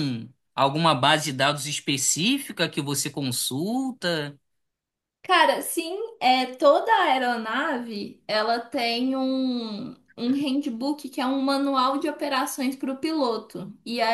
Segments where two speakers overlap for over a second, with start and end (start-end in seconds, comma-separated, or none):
none